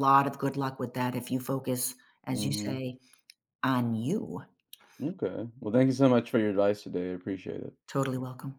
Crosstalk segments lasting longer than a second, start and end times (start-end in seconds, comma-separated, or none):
none